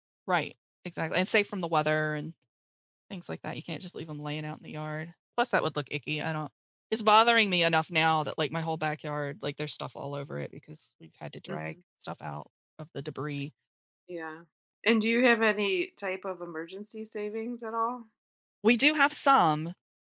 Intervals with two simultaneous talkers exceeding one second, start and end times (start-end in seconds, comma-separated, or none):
none